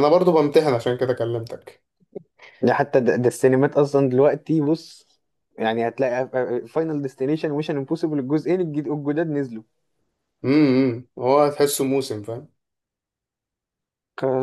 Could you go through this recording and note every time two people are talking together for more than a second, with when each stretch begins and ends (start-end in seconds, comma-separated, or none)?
none